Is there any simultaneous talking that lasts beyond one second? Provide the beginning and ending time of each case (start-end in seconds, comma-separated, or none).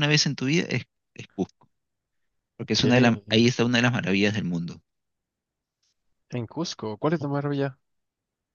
none